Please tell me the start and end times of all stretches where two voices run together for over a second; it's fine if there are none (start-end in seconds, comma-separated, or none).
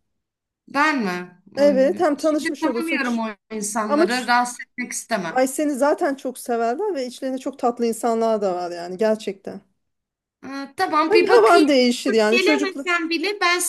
1.6-3.2